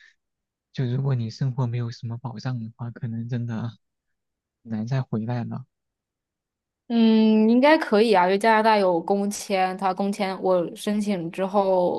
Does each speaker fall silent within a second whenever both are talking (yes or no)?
yes